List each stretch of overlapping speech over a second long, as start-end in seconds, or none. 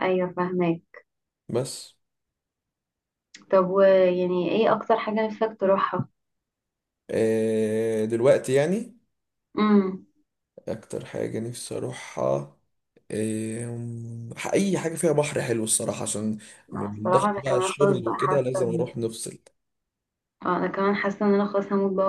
16.9-18.9